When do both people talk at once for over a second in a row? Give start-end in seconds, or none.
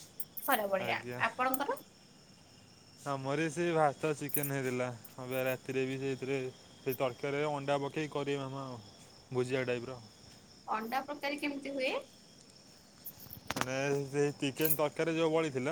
none